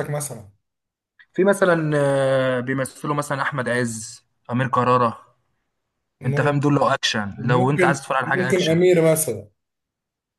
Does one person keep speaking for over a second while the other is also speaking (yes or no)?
yes